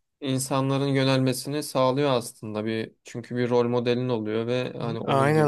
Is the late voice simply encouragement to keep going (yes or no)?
no